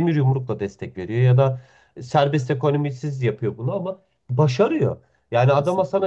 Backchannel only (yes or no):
yes